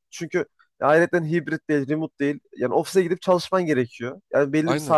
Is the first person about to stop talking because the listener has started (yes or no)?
no